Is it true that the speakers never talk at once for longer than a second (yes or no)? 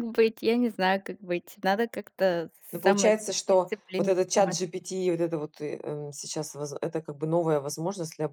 no